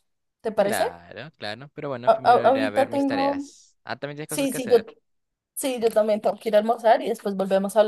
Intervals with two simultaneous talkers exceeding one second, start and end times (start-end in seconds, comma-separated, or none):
2.0-3.5